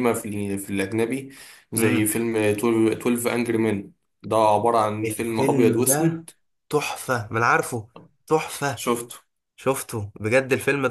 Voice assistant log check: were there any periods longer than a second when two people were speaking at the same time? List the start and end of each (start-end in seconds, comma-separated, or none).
5.0-6.2